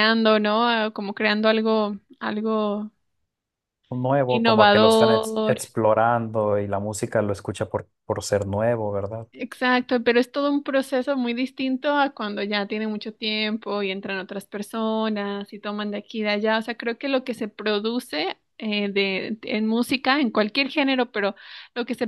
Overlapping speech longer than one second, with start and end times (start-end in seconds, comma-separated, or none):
4.3-5.6